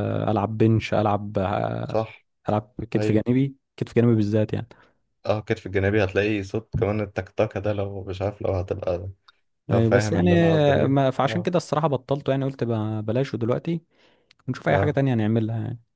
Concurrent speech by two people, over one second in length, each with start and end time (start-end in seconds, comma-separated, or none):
9.7-11.5